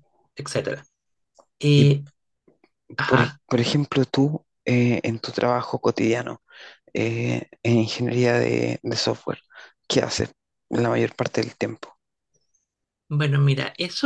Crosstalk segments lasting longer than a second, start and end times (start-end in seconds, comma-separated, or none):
none